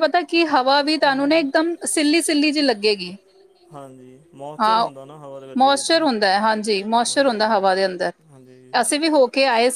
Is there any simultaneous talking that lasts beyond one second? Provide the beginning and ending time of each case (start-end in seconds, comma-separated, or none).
none